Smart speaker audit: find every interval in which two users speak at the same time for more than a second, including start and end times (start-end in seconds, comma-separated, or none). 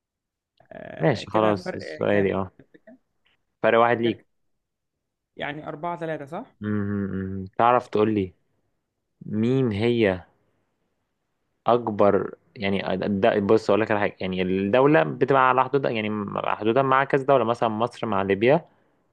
1.0-2.4